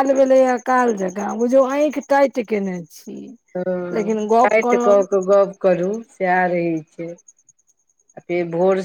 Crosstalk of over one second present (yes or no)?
no